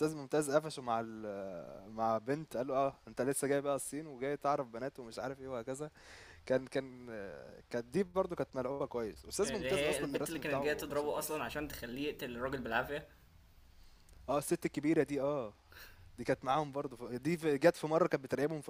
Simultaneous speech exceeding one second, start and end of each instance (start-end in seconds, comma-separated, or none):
9.4-11.4